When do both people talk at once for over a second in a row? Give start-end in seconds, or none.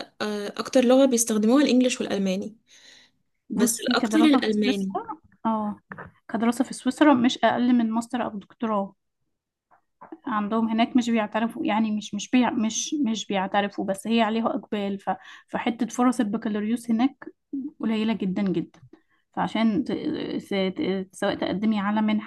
3.5-5.0